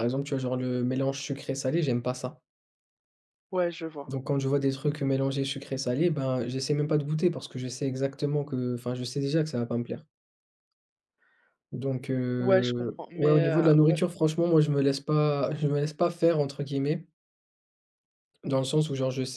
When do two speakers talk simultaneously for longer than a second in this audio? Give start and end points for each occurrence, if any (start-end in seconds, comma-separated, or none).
12.4-14.0